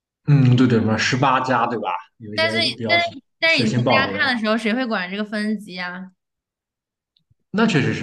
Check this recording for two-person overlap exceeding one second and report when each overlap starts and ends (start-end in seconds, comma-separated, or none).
2.3-4.4